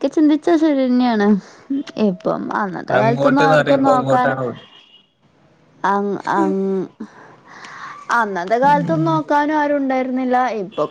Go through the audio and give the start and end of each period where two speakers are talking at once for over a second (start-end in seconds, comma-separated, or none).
3.0-4.3